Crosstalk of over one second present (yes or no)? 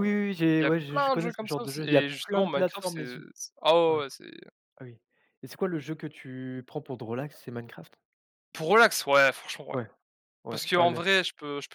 yes